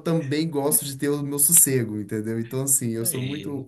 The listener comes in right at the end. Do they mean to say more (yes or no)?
no